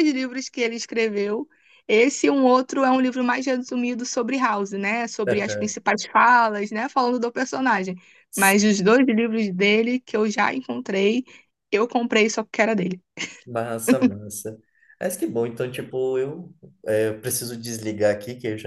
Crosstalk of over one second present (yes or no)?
no